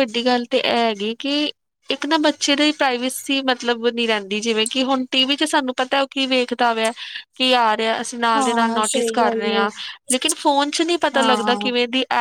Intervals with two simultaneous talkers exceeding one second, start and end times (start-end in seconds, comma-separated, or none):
8.3-9.6